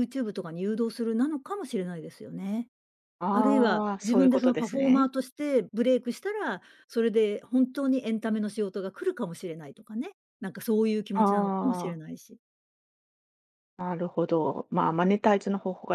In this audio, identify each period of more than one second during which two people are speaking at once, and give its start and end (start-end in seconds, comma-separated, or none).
3.3-5.1